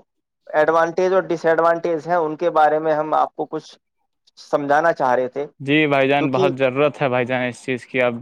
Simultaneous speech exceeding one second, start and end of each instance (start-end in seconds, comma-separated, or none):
none